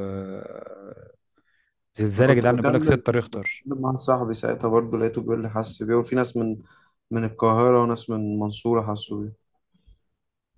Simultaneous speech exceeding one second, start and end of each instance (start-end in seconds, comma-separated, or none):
2.2-3.7